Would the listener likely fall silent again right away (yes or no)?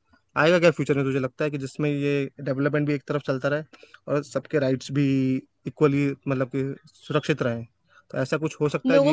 no